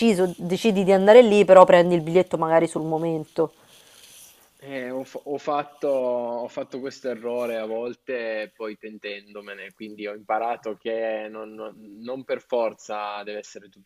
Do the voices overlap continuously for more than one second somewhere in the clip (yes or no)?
no